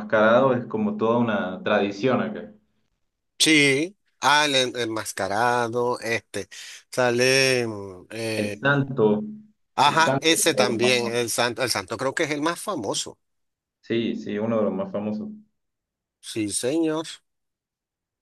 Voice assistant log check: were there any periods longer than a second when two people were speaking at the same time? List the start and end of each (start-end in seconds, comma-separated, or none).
9.8-11.2